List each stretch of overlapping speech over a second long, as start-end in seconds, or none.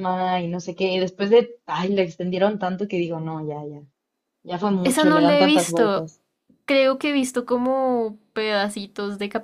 4.8-6.1